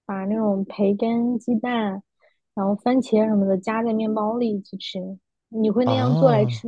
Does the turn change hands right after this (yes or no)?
yes